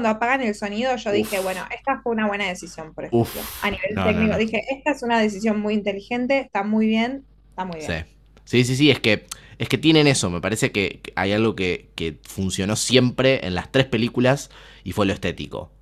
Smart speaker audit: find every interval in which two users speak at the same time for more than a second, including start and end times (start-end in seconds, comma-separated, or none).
3.1-4.4